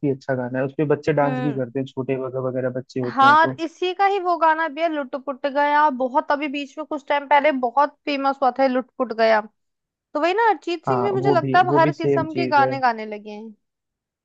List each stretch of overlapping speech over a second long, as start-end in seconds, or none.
10.9-12.8